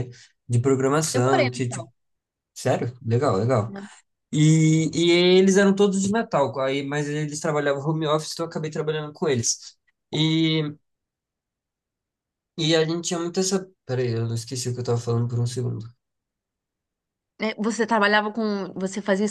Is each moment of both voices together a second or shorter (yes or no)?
yes